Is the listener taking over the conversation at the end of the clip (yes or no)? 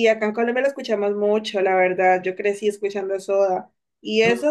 no